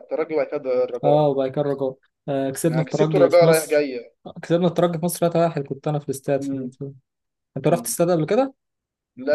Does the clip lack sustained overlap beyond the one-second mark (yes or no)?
no